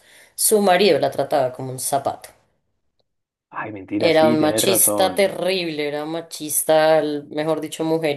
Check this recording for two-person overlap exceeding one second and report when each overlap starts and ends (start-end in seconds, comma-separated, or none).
4.0-5.3